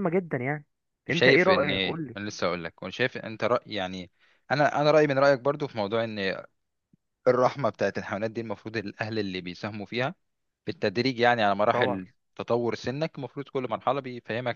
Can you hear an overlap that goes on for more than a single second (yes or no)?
no